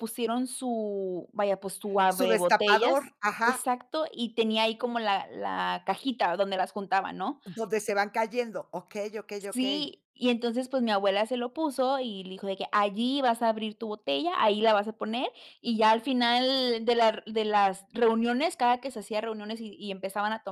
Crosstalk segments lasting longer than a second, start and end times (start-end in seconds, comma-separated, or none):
2.1-3.7